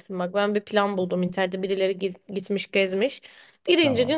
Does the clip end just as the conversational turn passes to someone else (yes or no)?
no